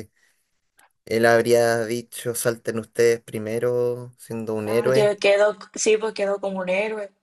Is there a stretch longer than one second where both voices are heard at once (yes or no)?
no